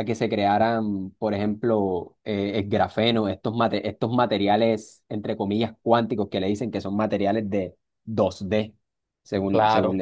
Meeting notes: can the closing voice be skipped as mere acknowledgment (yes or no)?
yes